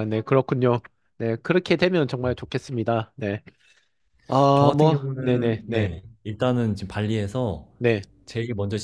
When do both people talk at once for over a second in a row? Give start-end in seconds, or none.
4.5-6.0